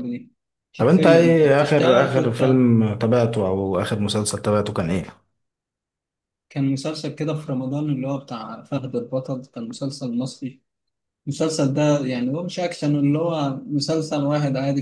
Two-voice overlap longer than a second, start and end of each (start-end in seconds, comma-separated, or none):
0.8-2.6